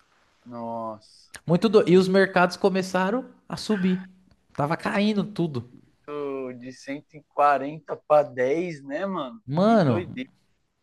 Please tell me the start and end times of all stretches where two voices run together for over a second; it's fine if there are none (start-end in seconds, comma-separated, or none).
none